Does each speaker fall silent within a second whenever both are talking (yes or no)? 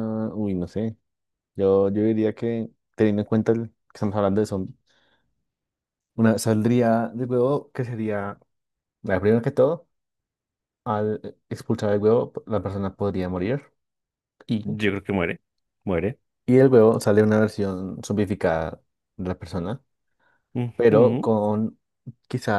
yes